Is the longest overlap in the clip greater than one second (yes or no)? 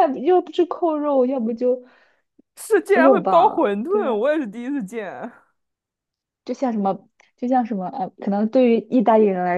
yes